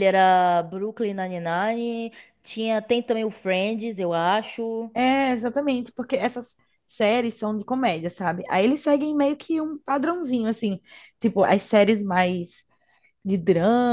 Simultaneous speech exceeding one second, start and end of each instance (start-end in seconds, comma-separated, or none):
none